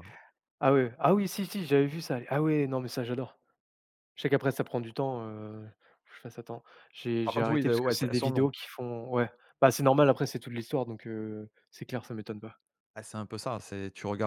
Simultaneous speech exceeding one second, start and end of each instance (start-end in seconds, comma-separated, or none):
7.2-8.5